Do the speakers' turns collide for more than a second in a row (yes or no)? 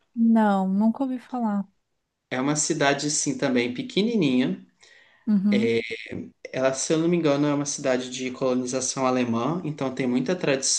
no